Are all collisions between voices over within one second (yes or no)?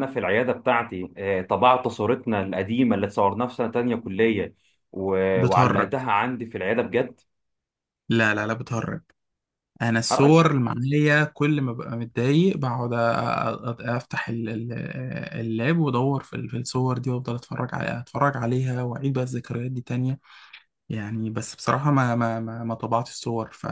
yes